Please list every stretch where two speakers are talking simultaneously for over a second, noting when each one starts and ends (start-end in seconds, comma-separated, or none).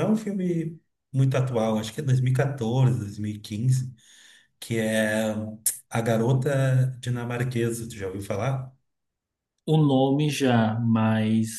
none